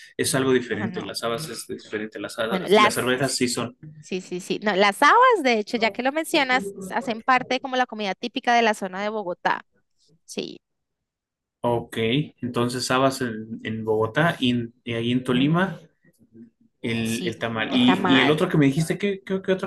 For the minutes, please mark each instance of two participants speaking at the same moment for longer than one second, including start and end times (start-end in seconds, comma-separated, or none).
17.0-18.5